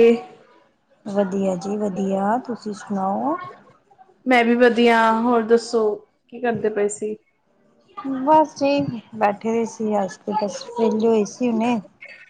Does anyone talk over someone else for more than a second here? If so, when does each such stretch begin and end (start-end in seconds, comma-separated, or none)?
none